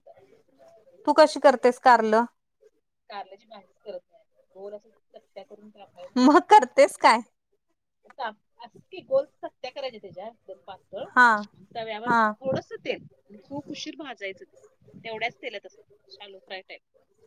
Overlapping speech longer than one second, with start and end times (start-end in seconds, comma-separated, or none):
none